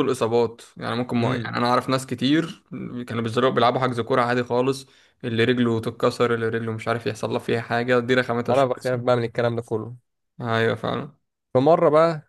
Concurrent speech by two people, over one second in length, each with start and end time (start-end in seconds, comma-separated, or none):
none